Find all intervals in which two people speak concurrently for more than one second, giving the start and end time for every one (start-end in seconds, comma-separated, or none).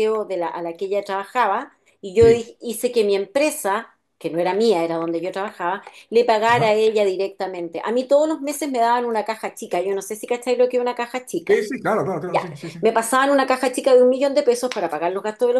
none